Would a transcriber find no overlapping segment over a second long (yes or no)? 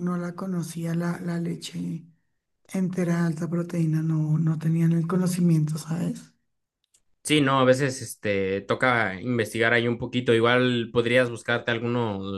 yes